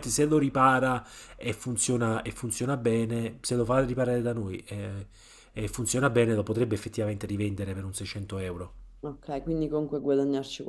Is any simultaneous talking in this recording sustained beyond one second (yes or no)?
no